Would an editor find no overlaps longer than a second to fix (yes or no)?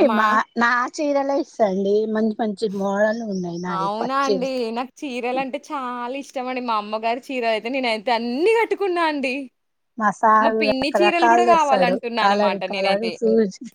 no